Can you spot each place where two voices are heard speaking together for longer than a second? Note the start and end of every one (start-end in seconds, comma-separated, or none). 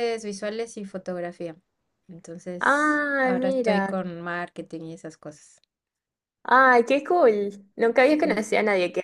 2.6-3.9